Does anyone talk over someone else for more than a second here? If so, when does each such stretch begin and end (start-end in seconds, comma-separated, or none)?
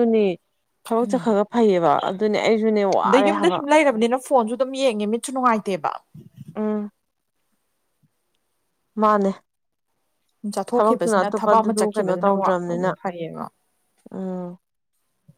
10.7-12.9